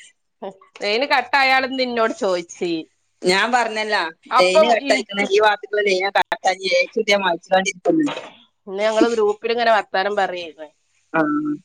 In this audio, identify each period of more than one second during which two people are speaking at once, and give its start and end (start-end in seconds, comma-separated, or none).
none